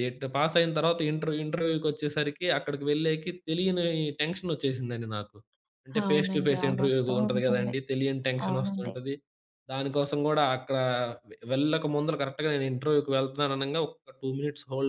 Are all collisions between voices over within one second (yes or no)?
no